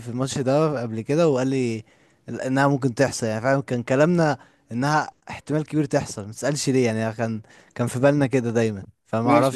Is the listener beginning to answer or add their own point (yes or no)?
yes